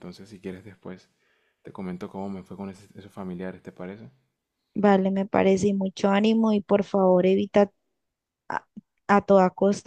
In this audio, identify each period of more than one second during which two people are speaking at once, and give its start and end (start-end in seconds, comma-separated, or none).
none